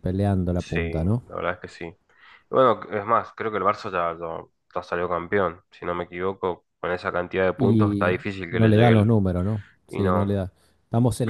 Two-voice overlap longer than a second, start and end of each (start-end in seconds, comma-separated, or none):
7.6-9.1